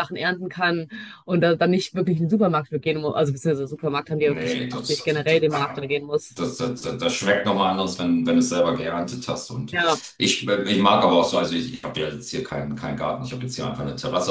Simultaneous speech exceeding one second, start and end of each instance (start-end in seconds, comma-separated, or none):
4.2-5.5